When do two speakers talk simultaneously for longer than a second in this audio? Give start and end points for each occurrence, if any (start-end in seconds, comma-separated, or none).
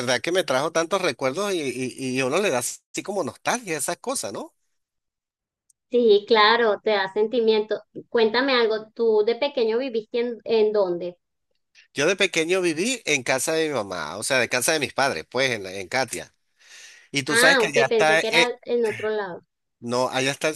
17.3-18.6